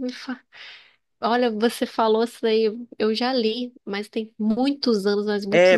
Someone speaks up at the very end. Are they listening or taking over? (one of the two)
taking over